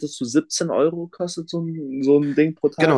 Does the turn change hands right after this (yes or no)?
yes